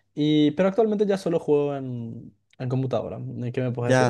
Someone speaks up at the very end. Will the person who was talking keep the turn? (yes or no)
no